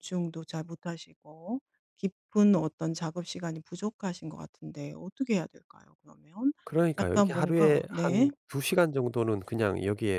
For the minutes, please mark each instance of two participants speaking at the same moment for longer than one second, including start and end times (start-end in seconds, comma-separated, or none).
7.0-8.3